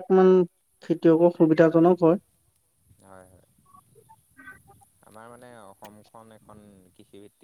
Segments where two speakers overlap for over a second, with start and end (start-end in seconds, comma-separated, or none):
none